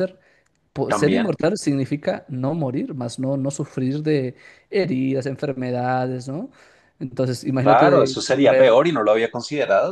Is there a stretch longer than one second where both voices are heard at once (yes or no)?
yes